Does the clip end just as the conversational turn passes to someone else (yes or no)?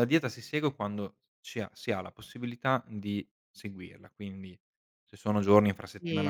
yes